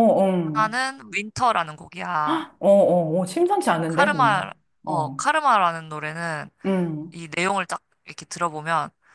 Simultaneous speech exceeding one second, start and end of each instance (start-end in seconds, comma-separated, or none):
3.9-5.2